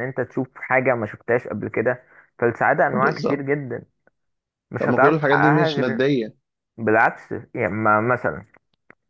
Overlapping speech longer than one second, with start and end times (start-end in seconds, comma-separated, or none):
4.8-6.0